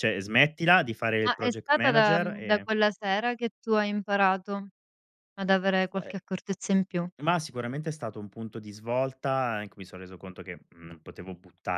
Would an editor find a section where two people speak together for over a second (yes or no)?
yes